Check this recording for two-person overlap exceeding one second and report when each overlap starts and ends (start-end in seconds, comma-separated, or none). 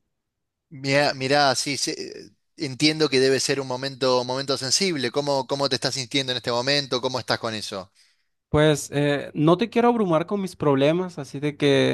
none